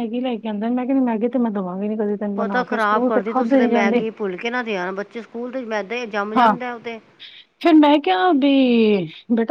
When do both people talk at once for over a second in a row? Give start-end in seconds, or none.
none